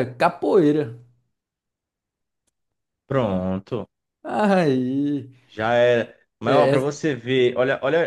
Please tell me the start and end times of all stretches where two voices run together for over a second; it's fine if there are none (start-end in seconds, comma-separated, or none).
none